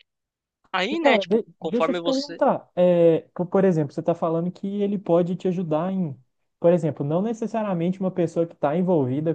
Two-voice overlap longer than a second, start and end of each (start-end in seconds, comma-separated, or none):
0.9-2.4